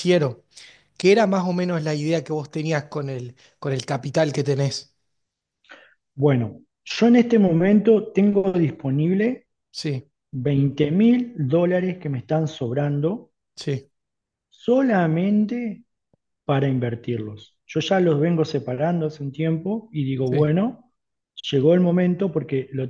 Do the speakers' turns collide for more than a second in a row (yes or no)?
no